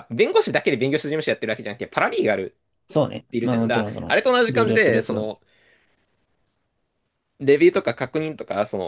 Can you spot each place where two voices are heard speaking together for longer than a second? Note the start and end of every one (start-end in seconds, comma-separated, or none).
3.3-5.2